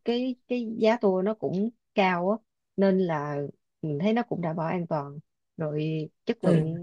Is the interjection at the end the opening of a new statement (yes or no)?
no